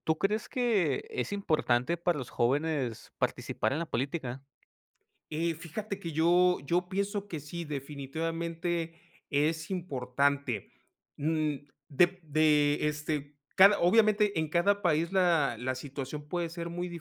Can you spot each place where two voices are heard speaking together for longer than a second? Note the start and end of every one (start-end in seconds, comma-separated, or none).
none